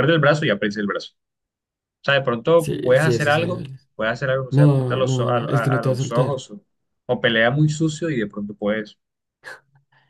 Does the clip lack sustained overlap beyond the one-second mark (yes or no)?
no